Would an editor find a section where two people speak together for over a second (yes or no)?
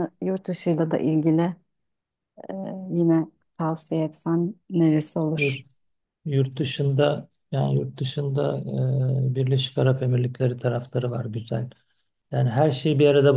no